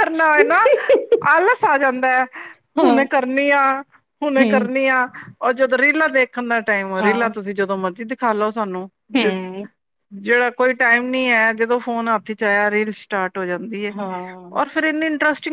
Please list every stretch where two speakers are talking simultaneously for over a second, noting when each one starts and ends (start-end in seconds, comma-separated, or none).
none